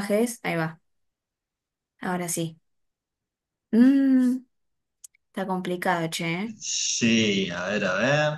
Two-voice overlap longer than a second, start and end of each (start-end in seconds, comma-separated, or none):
none